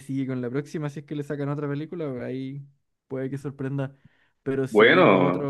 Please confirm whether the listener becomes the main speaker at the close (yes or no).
no